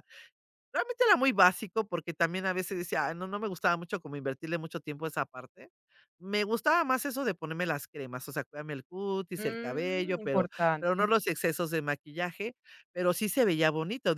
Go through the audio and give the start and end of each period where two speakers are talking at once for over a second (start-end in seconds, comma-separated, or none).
9.4-11.1